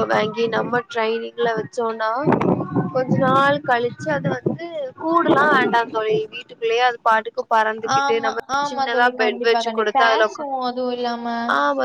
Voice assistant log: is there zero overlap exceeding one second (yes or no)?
no